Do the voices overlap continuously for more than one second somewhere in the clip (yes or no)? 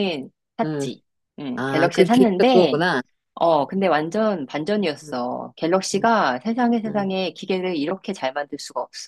yes